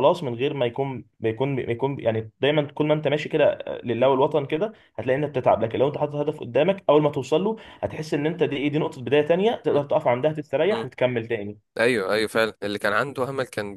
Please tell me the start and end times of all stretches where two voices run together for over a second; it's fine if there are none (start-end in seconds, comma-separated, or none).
none